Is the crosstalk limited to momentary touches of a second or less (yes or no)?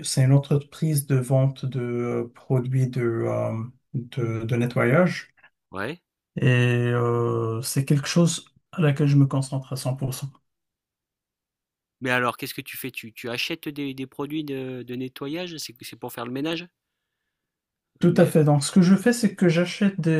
yes